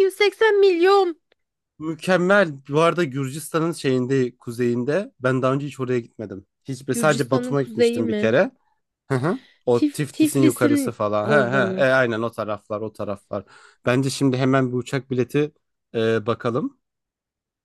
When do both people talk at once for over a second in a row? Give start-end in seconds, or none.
6.9-8.4, 9.7-11.9